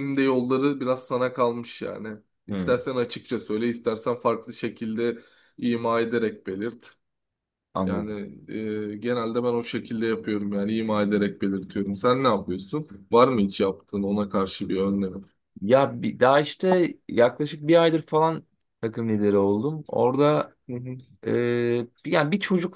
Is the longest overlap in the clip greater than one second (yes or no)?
no